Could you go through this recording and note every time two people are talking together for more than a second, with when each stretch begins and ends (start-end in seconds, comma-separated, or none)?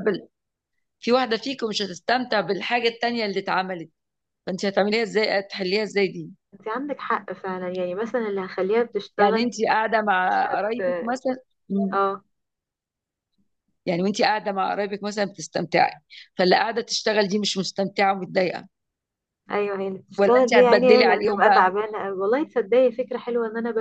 20.2-21.7